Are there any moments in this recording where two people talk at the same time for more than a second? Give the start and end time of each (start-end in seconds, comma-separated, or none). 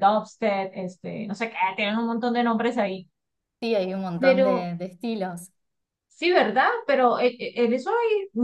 none